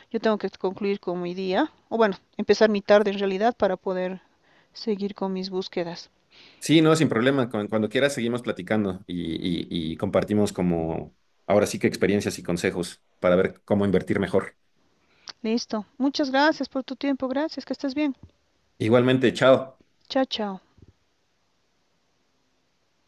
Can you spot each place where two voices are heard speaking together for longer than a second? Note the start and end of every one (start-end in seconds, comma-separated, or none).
none